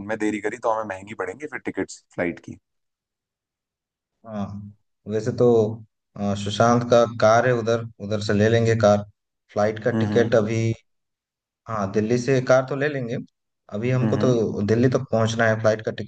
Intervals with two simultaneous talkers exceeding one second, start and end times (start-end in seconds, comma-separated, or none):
none